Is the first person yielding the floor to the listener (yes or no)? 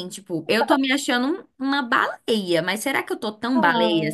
no